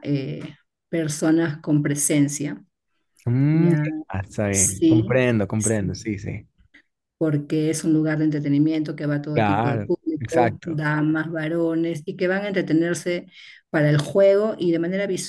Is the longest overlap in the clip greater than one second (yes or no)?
yes